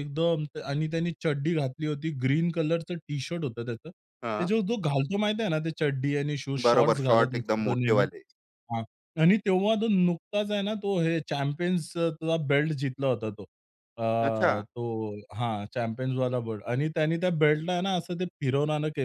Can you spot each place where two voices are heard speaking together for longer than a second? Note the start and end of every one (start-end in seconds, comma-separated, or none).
6.7-8.1